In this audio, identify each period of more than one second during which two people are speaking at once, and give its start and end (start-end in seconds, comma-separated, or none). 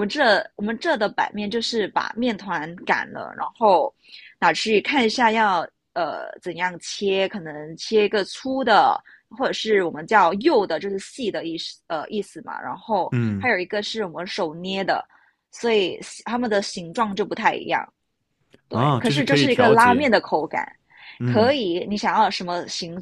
18.7-20.1